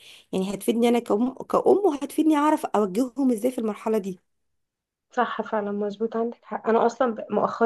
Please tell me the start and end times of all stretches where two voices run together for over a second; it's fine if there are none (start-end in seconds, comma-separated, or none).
none